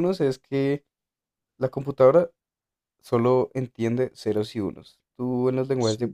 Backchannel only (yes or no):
yes